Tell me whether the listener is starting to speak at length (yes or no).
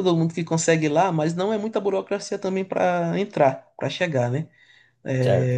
no